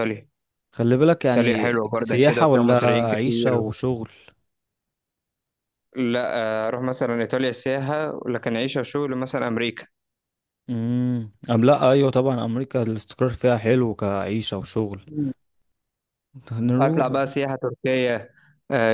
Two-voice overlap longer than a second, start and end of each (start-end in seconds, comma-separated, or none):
1.3-3.6